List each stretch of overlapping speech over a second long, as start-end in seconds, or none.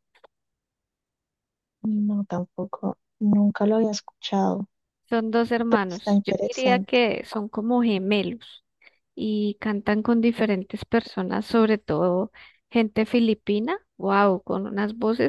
5.7-6.9